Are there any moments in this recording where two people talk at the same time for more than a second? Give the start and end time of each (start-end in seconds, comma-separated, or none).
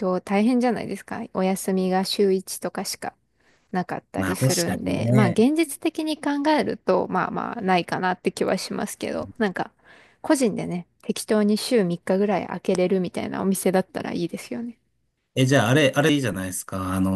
4.2-5.5